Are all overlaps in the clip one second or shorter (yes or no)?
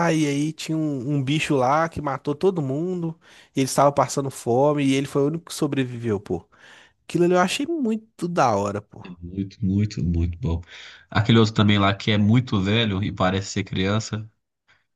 yes